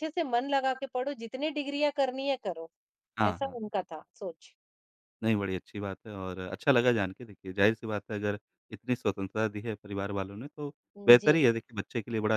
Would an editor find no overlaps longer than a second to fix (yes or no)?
yes